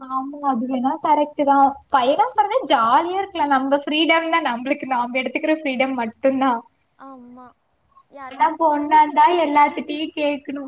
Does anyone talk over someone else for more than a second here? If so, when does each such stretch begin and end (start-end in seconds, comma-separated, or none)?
8.3-10.1